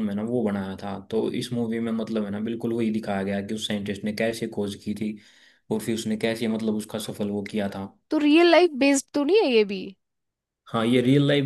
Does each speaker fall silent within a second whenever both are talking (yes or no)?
yes